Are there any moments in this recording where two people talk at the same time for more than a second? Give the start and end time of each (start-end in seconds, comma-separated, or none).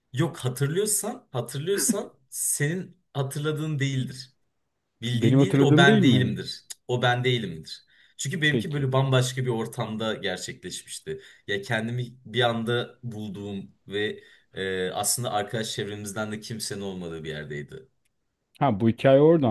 5.1-6.3